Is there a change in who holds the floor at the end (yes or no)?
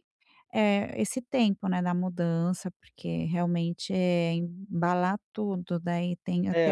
yes